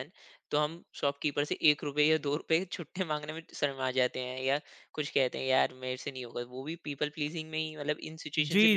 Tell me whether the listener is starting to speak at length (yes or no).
yes